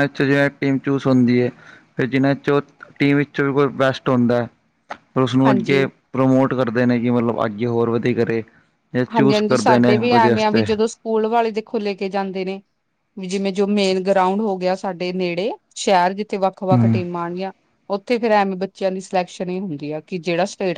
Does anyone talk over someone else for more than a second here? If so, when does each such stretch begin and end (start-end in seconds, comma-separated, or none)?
9.1-10.7